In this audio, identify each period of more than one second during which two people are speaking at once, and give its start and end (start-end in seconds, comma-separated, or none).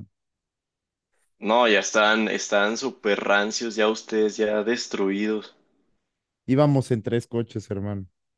none